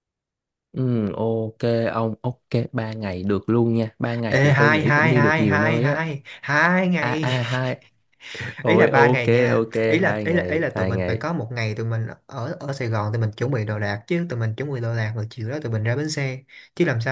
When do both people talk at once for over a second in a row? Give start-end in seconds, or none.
4.3-6.0, 8.7-11.2